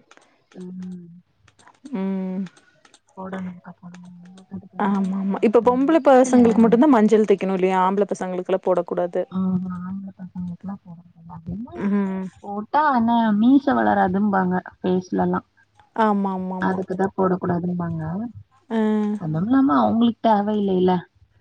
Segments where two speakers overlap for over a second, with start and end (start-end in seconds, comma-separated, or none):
none